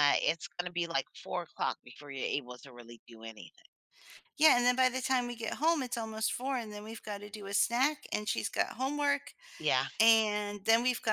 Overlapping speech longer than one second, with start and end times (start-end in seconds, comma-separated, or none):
none